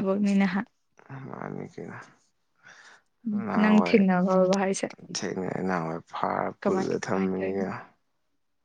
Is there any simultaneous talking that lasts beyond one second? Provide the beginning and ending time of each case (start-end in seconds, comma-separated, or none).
none